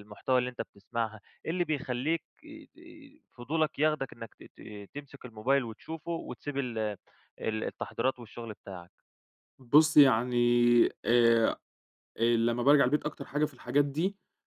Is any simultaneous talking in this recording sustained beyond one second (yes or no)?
no